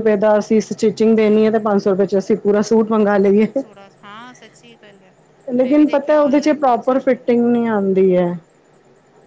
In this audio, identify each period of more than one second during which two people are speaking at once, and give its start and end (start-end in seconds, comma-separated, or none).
5.6-7.2